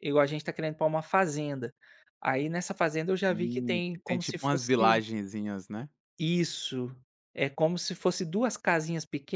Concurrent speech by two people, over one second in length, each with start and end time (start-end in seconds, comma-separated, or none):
3.3-5.0